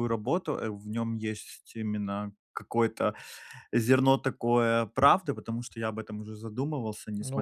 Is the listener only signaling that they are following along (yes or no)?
no